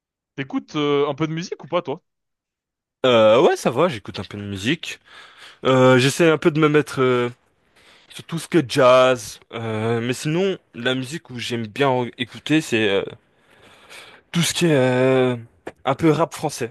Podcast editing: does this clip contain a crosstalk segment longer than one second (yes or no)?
no